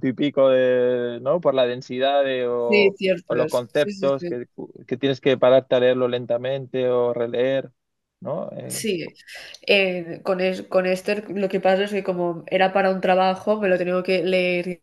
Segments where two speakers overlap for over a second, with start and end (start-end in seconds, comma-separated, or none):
2.7-4.4